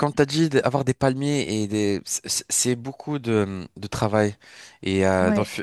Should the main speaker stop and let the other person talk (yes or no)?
no